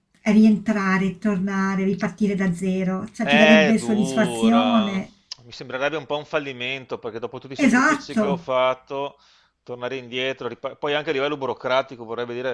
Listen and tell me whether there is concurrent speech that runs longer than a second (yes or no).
yes